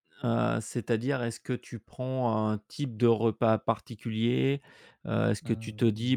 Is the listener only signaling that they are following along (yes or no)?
yes